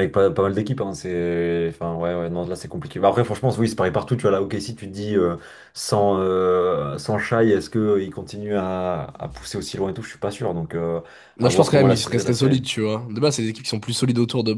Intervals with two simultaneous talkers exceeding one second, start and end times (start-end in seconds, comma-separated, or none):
11.4-12.6